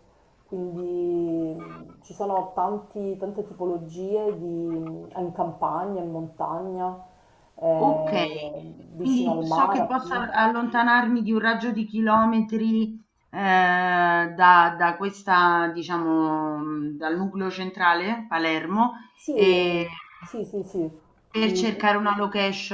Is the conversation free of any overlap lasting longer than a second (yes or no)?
no